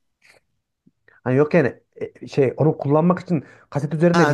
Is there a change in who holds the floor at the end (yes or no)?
yes